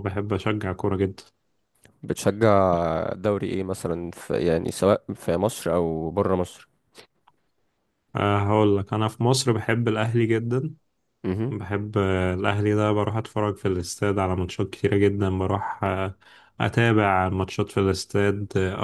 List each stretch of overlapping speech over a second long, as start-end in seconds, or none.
none